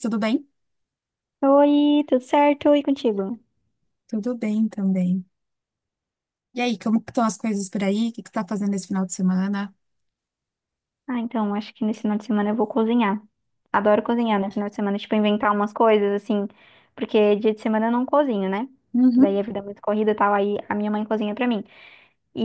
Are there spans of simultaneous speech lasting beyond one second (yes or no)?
no